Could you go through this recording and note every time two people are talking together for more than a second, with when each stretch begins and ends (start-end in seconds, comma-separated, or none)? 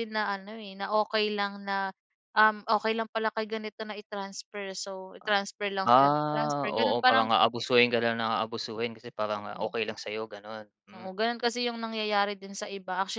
5.8-7.3